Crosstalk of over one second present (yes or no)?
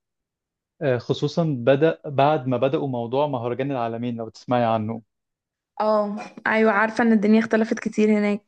no